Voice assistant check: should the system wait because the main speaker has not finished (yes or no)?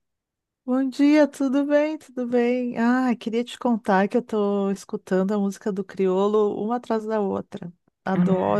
no